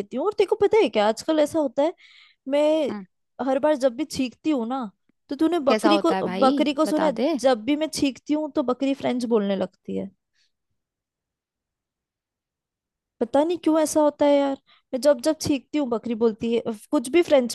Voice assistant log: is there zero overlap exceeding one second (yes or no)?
no